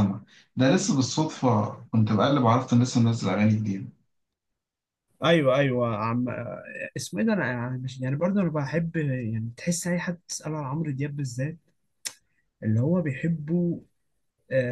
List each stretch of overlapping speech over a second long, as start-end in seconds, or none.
none